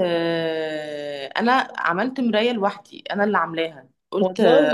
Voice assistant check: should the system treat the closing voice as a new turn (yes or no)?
no